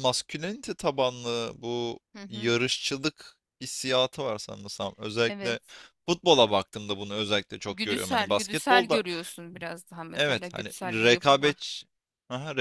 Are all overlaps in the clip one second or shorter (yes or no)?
no